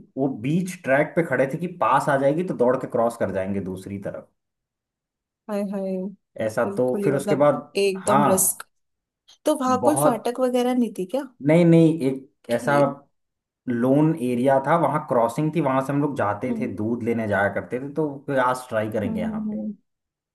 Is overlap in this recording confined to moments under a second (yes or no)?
no